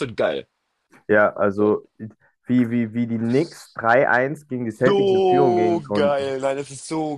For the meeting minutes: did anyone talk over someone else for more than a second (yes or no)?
yes